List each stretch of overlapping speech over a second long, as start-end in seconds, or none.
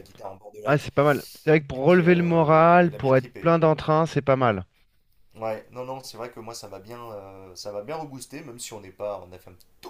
1.8-3.5